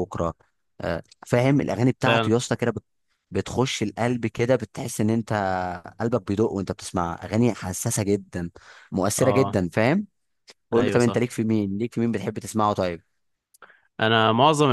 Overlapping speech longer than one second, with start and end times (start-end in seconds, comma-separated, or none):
none